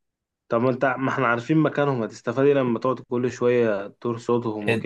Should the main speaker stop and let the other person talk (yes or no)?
yes